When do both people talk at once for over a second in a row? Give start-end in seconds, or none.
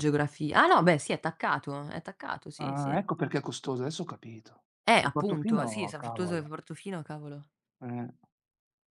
5.0-6.5